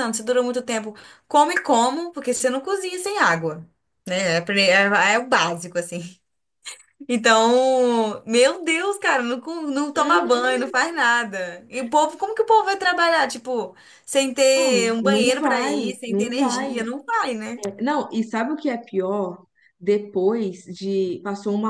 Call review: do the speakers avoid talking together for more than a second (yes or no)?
no